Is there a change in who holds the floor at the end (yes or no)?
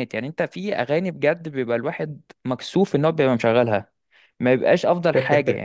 no